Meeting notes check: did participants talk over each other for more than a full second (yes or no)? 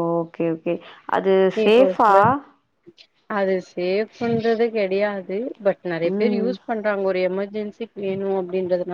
no